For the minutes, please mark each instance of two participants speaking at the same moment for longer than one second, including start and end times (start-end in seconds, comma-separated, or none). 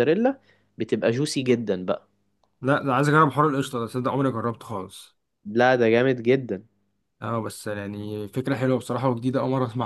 none